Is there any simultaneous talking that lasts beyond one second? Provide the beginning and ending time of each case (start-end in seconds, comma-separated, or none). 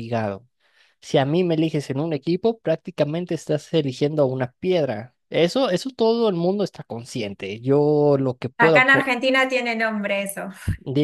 none